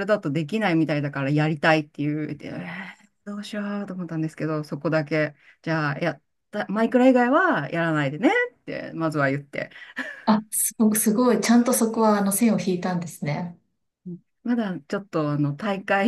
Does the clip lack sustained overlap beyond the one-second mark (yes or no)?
yes